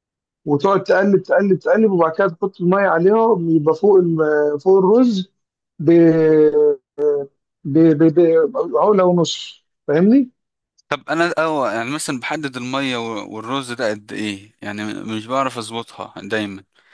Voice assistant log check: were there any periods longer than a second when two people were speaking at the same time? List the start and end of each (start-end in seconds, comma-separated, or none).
none